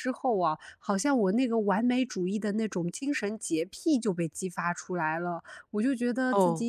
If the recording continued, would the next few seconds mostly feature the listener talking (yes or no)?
no